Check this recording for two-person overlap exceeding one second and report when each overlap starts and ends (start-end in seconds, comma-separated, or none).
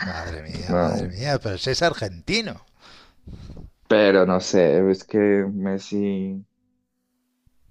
none